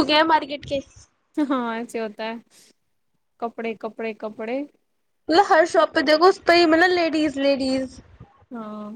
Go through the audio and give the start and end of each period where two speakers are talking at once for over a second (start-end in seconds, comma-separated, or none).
none